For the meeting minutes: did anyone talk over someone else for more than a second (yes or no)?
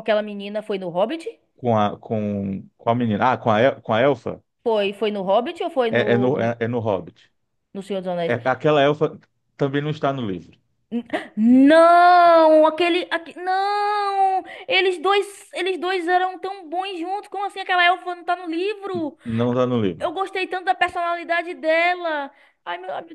no